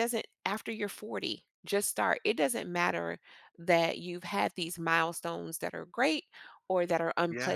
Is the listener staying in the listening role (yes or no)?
yes